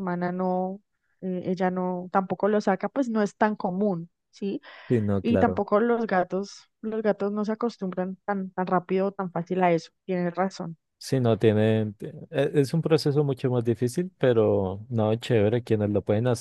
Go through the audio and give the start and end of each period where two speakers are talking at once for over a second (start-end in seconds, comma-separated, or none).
none